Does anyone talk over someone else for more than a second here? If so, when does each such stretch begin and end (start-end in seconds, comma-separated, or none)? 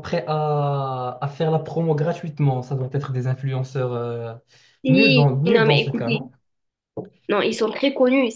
4.9-6.2